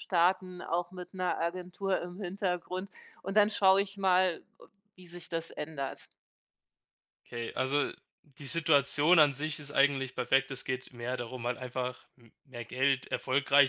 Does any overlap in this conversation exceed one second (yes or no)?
no